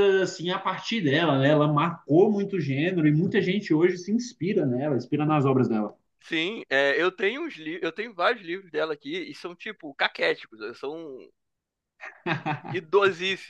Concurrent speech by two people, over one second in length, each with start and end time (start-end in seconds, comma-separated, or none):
none